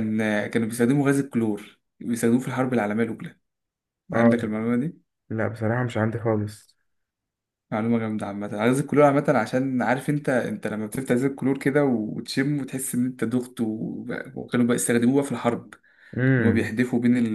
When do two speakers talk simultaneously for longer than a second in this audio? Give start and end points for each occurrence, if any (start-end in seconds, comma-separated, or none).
none